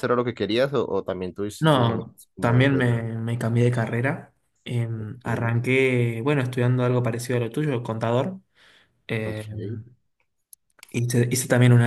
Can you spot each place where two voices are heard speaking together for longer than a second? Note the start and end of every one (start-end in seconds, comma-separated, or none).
1.6-3.0